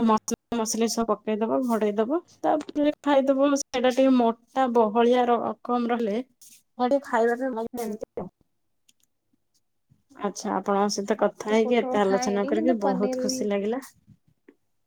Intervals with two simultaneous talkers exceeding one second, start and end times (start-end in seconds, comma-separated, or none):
11.2-13.4